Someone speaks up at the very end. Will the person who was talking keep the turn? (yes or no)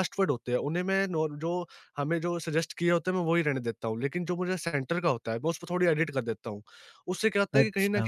yes